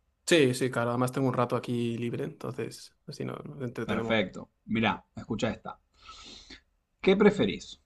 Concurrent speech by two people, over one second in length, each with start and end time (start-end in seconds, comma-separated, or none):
none